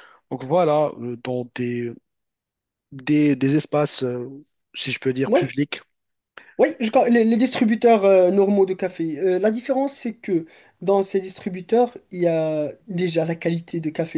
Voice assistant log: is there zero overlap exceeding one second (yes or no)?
yes